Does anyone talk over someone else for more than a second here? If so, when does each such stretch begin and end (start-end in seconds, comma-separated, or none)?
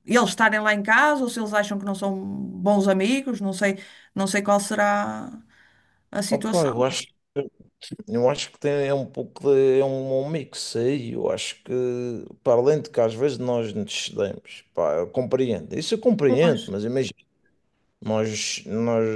none